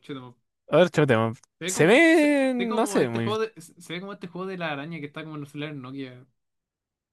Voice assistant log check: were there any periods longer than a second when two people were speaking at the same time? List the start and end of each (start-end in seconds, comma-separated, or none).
1.6-3.3